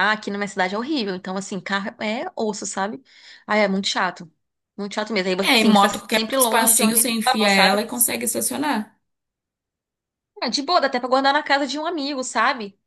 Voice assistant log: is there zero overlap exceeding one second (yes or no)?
no